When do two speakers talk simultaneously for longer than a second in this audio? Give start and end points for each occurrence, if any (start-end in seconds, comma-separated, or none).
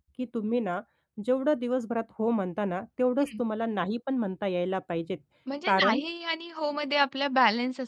none